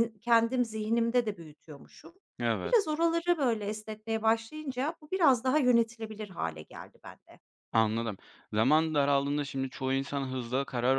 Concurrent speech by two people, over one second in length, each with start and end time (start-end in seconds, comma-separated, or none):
none